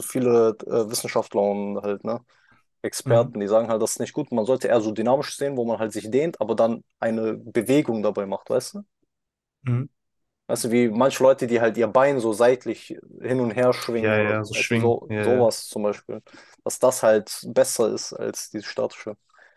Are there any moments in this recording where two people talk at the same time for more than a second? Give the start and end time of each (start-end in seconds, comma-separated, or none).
14.0-15.5